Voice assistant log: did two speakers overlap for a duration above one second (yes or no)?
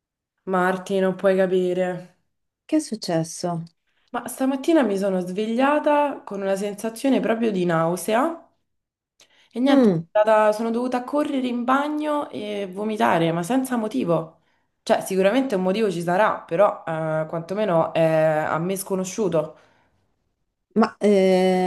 no